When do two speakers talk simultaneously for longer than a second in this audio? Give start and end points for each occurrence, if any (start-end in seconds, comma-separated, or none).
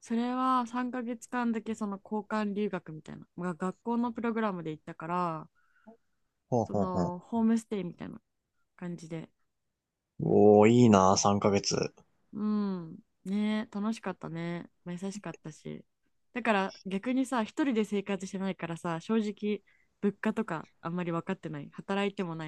none